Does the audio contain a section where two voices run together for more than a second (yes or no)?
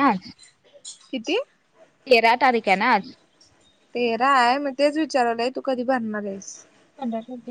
no